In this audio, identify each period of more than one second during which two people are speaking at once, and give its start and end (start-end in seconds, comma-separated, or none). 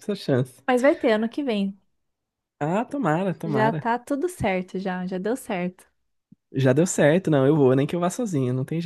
none